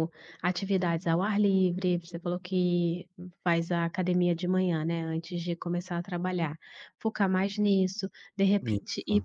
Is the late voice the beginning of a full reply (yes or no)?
no